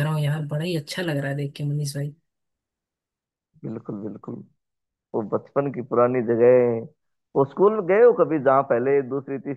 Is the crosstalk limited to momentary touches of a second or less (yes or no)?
yes